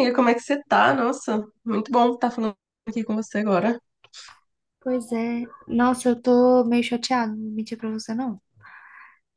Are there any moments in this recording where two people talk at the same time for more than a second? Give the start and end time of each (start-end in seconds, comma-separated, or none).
none